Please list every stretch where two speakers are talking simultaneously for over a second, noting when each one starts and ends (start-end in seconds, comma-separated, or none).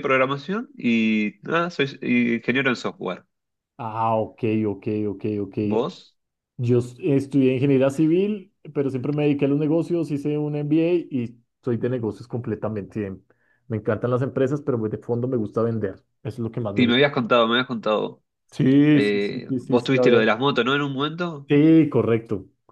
18.9-20.4